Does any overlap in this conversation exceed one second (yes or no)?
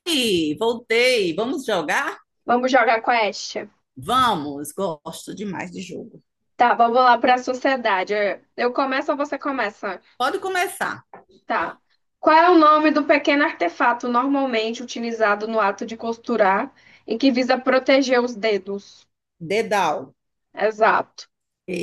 no